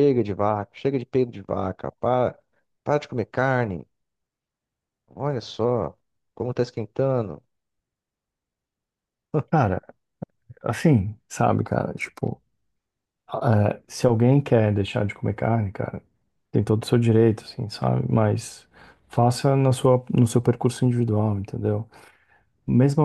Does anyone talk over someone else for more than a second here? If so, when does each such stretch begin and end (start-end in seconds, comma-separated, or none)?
none